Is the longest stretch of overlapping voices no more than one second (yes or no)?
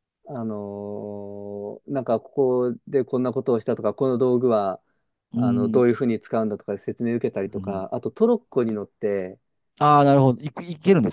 yes